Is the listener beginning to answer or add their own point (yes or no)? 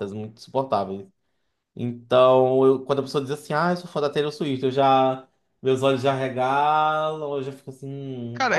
yes